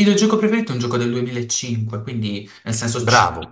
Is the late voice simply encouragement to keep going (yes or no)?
yes